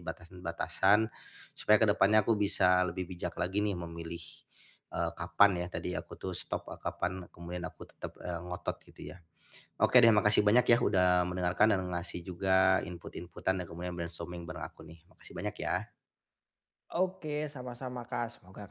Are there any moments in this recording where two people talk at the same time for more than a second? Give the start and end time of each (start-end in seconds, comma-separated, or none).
none